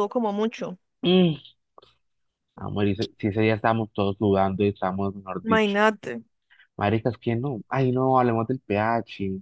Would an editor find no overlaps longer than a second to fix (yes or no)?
yes